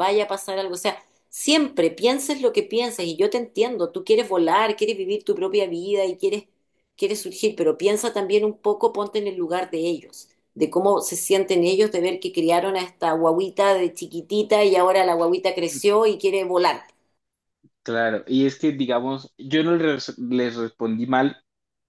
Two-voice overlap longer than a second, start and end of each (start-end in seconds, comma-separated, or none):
none